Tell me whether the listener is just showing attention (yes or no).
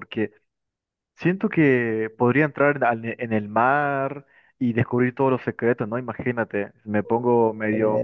yes